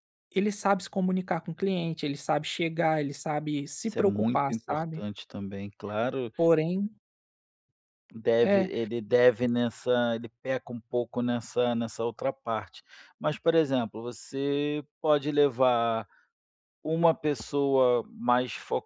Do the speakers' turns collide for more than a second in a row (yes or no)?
yes